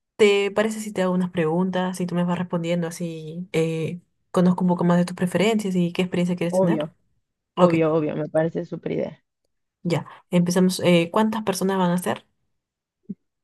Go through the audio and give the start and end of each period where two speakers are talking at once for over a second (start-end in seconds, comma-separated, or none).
none